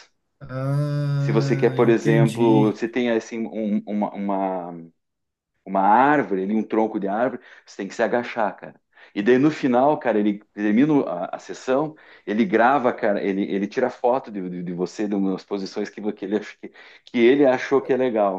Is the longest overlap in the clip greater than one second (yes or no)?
yes